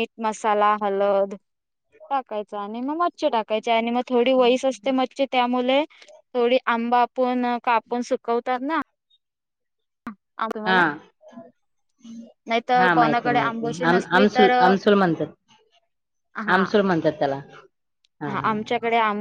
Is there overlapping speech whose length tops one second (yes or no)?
yes